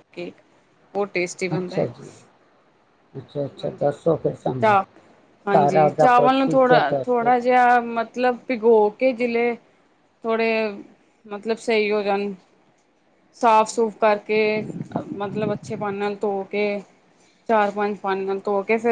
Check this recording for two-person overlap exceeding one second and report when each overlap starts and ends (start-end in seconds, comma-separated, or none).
5.5-7.3